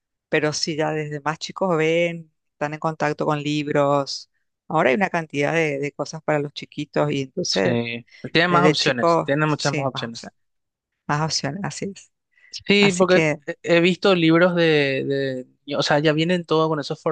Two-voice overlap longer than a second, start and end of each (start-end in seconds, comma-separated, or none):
8.5-10.3